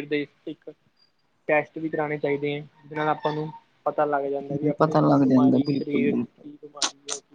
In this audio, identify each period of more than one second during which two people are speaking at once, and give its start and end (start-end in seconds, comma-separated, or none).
4.8-6.4